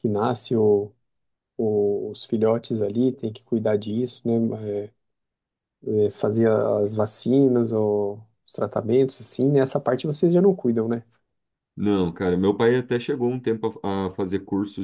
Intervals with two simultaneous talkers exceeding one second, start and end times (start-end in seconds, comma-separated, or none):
none